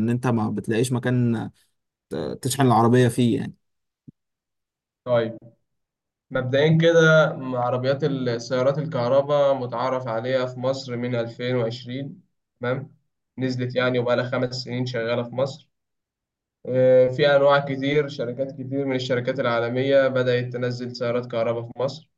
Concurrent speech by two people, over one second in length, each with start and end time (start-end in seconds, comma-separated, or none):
none